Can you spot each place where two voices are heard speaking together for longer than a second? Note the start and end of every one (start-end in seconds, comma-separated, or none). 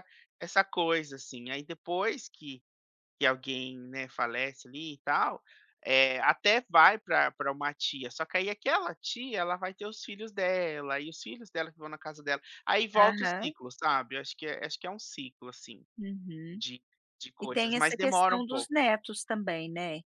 17.4-18.7